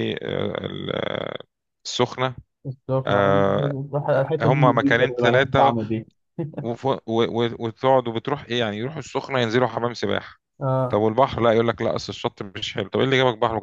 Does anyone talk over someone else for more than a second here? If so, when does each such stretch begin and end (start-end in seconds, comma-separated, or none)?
4.4-5.7